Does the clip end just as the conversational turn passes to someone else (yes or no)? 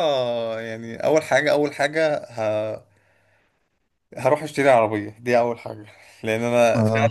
no